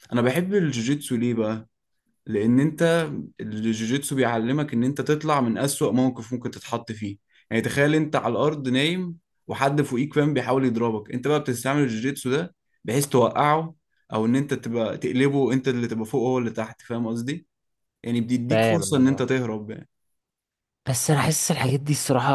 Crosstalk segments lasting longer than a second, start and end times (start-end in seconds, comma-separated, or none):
none